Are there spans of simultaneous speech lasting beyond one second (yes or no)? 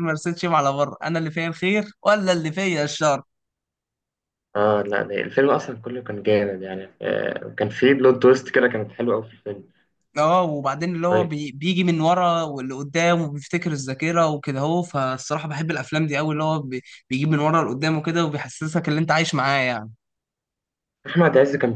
no